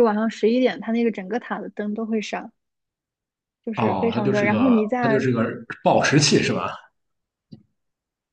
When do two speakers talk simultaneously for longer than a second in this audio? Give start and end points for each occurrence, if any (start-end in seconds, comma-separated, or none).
3.8-5.3